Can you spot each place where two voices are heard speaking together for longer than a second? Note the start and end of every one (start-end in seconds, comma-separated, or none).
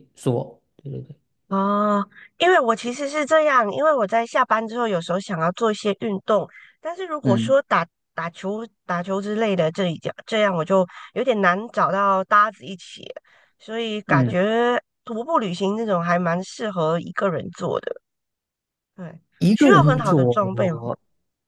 19.4-20.8